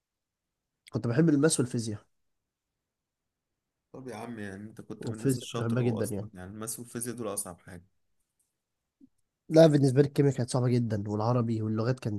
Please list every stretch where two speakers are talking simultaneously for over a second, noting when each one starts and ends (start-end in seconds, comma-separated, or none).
5.0-6.3